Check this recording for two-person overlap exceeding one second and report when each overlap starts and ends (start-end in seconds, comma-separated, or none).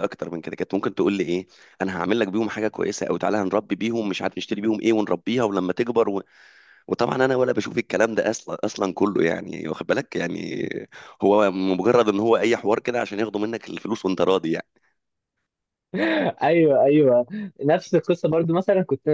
none